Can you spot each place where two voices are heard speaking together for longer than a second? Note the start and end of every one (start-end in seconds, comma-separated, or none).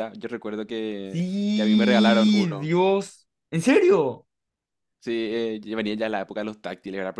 1.1-2.7